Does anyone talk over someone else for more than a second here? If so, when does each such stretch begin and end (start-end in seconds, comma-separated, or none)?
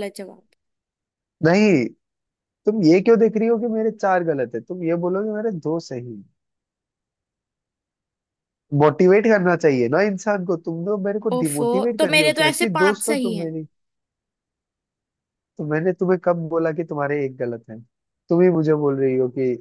11.3-13.5